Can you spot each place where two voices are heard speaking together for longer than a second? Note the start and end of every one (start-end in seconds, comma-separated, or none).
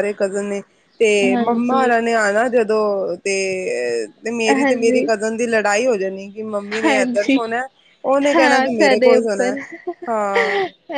8.3-9.5